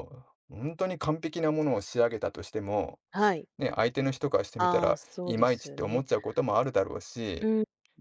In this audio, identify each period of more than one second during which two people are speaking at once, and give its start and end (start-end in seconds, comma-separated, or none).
4.6-6.0